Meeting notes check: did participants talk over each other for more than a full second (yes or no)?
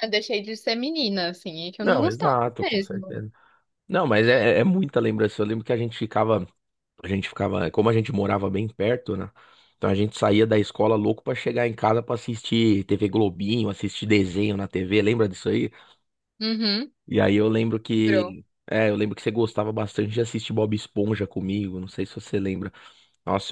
yes